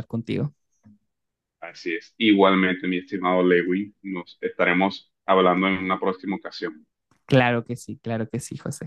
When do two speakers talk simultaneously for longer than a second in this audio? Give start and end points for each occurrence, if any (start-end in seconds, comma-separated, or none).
none